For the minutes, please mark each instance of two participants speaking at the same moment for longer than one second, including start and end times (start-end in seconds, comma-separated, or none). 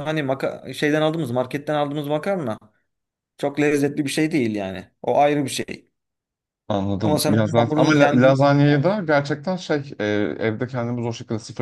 7.0-8.4